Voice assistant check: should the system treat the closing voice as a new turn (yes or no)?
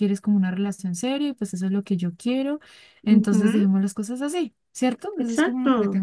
yes